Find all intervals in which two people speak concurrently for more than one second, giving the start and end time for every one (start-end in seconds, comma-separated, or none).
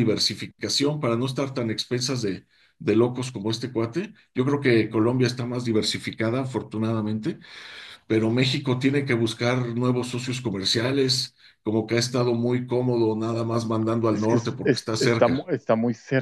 14.1-15.5